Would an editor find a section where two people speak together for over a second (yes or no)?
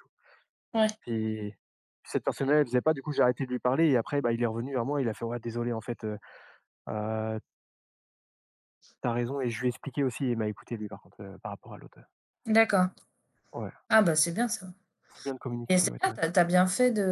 no